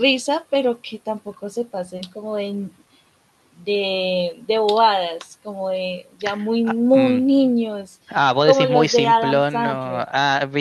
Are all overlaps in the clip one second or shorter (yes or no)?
no